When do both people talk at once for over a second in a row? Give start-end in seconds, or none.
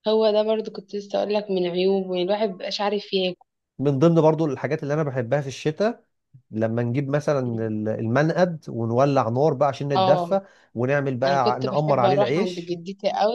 11.2-12.8